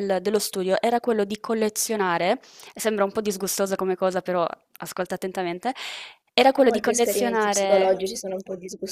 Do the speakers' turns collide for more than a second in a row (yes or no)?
yes